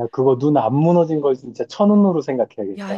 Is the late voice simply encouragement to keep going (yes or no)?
no